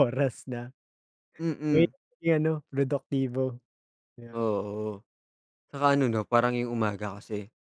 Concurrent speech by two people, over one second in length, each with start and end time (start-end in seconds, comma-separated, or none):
none